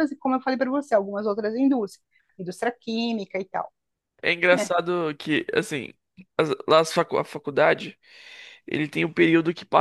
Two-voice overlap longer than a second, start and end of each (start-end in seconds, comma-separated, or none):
none